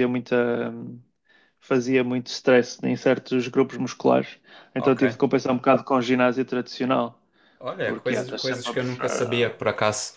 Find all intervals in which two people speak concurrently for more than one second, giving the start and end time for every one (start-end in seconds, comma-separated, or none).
7.8-9.6